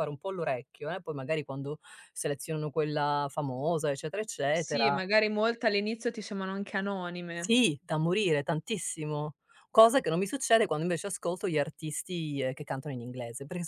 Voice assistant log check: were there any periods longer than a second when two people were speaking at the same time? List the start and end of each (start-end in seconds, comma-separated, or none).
none